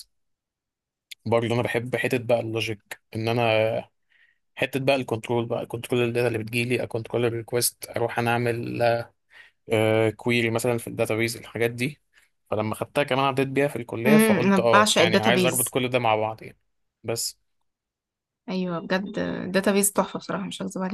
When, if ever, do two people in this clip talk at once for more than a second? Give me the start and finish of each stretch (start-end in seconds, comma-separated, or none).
14.1-15.8